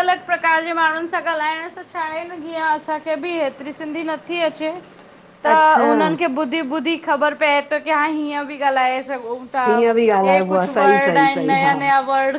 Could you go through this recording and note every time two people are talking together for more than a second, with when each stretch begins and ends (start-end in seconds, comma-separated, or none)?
10.2-11.7